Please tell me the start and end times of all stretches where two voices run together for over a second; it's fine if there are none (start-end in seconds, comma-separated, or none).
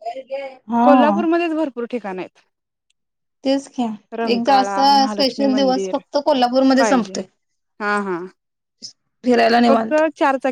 4.3-6.0